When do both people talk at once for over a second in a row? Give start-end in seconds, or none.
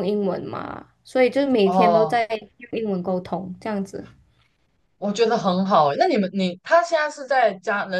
none